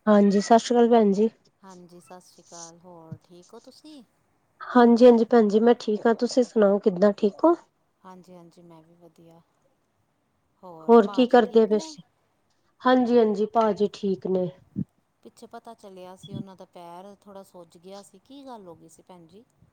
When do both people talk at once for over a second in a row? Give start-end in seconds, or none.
none